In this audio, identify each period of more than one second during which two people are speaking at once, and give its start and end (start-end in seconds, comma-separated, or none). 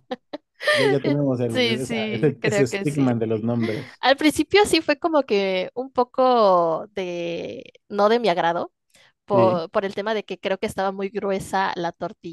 1.0-3.1